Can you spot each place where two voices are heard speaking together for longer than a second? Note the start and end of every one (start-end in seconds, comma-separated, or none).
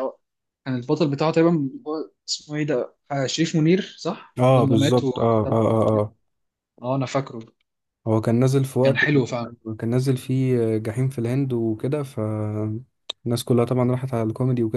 4.4-5.7